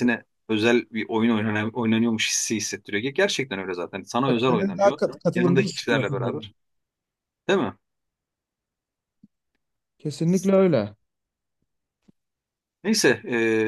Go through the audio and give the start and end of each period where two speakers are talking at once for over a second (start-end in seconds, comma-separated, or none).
4.3-6.5